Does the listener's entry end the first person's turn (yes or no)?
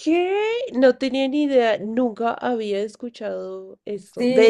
no